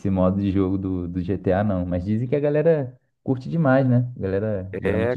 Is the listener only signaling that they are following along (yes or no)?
no